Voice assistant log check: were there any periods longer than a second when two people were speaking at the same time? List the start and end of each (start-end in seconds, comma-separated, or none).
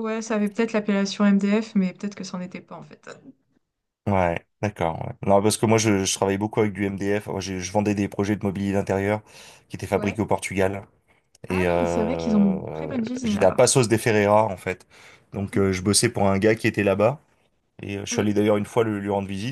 11.5-13.7